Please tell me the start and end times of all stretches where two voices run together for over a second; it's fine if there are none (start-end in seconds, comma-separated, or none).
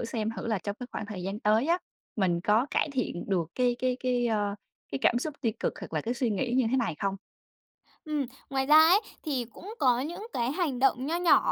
none